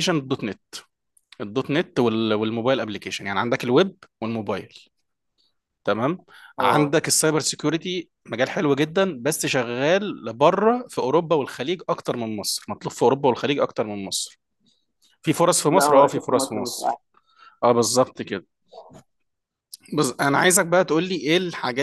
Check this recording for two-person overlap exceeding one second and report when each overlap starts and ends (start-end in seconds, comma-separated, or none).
15.7-17.0